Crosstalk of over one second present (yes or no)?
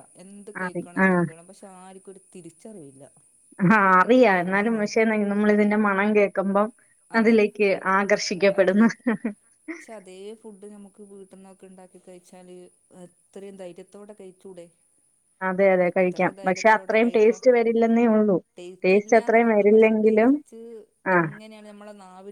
yes